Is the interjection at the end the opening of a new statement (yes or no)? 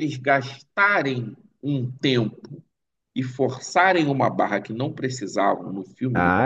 no